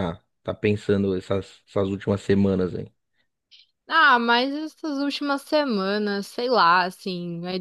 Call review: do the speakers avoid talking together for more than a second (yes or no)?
yes